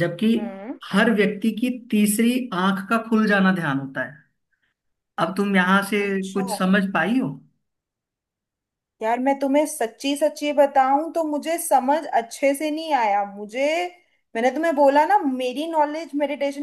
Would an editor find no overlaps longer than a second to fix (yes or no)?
yes